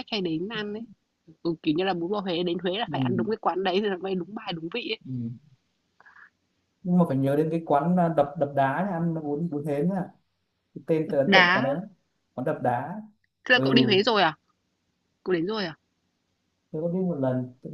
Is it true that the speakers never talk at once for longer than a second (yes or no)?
yes